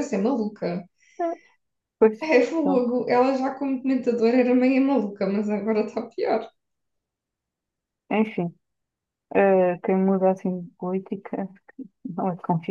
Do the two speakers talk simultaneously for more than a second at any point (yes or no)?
no